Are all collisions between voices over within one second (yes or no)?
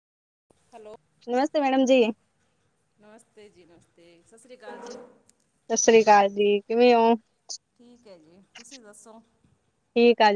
yes